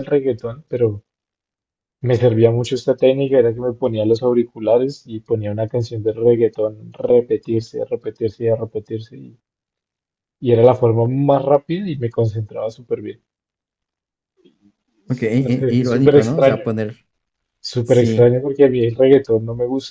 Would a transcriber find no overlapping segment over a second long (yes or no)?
no